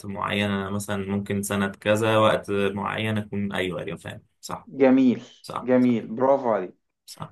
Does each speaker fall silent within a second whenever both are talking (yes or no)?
yes